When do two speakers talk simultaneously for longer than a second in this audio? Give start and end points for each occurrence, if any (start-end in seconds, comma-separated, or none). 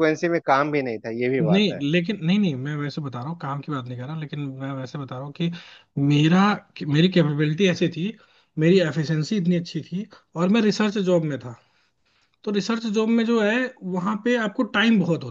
none